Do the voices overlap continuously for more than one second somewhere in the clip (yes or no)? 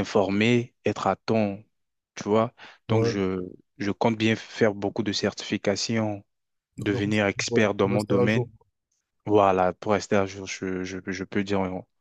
yes